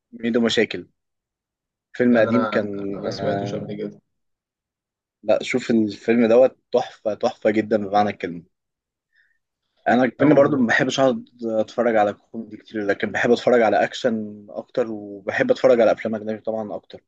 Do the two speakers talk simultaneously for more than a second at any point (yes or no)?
yes